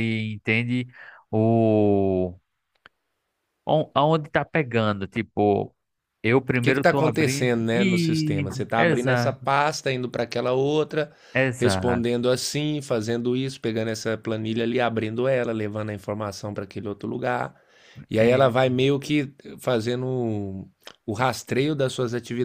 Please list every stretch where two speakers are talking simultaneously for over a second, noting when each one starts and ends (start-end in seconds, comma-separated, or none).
6.6-9.5